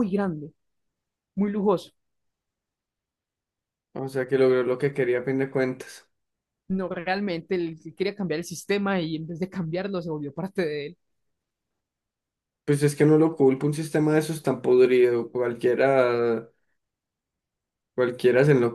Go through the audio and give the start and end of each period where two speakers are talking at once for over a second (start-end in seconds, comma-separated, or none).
none